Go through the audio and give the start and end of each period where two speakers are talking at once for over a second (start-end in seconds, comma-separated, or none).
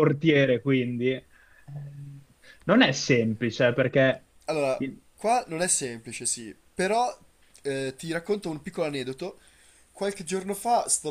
none